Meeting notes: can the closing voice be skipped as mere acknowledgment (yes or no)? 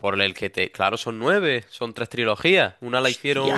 yes